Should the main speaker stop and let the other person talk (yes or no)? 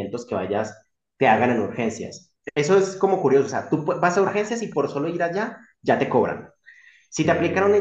no